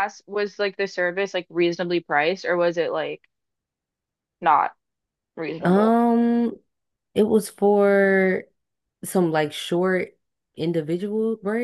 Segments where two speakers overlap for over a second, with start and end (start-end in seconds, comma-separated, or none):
none